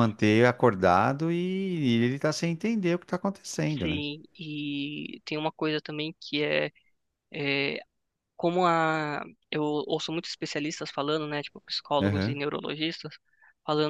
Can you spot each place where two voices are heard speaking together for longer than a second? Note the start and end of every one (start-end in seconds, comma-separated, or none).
none